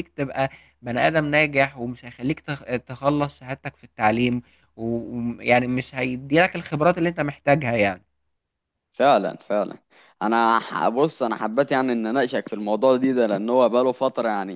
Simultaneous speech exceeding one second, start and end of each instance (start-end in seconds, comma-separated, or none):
none